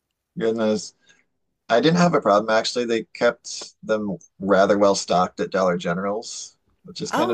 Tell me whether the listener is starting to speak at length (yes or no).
yes